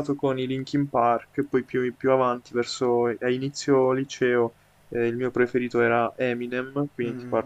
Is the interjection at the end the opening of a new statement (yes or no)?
yes